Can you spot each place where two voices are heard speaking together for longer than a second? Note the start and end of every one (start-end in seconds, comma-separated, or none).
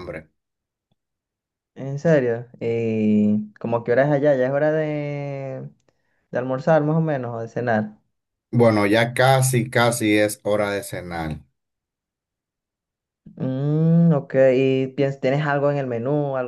none